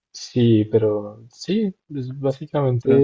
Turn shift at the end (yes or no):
no